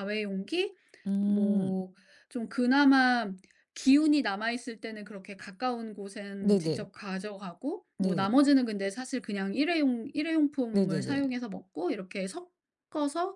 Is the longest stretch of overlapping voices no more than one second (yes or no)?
yes